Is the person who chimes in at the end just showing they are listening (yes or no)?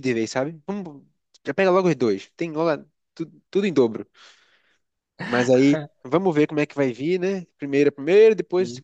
yes